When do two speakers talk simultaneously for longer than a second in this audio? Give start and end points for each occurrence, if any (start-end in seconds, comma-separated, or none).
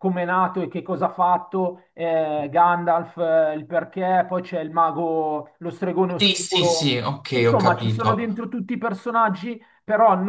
6.2-8.5